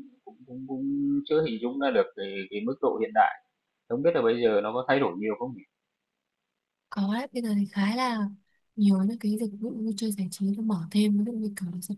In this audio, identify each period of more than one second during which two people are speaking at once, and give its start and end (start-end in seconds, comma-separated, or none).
none